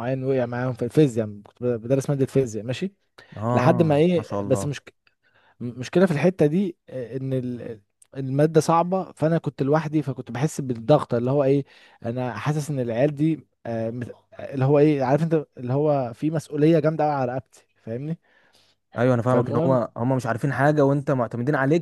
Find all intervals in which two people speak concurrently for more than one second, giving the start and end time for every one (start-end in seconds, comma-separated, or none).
3.5-4.7